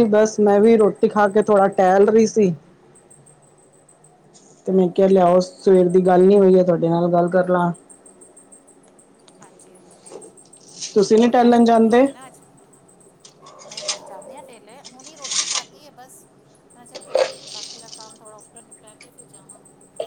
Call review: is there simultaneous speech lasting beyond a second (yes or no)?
no